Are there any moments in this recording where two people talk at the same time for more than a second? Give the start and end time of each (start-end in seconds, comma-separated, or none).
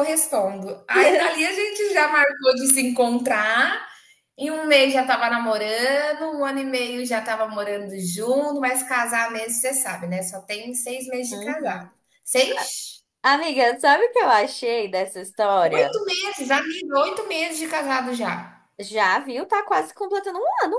none